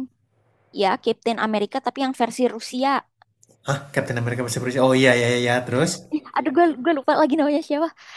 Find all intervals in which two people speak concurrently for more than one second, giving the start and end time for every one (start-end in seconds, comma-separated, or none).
none